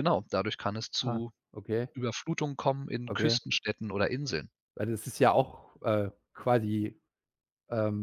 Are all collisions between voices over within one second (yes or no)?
yes